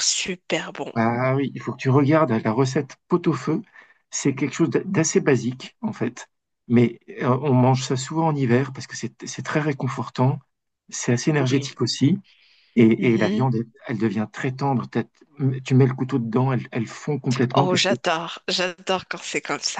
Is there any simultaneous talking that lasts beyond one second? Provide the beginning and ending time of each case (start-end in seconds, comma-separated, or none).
none